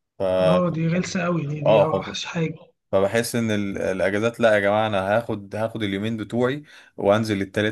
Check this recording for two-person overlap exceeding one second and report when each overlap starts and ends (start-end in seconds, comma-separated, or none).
none